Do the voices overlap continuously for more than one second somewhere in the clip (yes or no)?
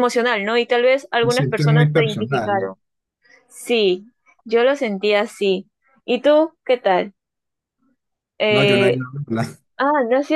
yes